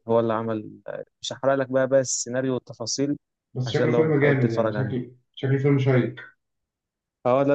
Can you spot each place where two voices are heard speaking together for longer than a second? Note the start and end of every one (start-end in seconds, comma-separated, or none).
3.6-4.9